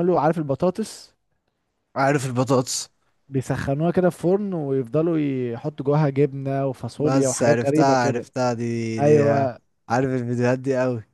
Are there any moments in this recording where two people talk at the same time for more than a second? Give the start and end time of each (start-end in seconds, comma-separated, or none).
7.0-8.3